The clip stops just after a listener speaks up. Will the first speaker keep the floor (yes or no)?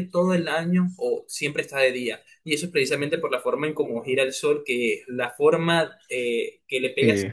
yes